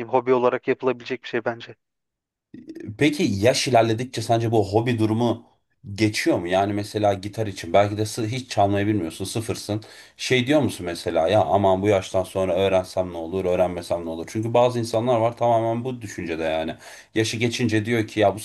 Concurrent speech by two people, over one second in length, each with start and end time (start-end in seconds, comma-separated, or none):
none